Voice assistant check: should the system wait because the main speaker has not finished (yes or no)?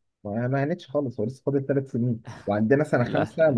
yes